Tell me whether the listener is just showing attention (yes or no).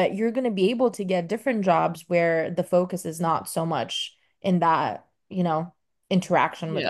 no